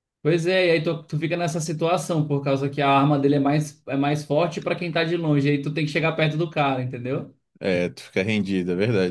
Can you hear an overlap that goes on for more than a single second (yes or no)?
no